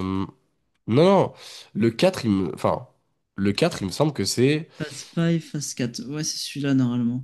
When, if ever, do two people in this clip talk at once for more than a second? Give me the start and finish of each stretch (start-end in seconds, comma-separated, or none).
none